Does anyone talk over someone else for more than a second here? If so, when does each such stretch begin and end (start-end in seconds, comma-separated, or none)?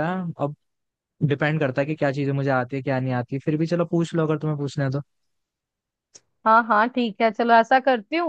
none